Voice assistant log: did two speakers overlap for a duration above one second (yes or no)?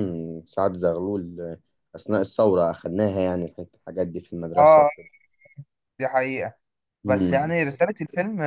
no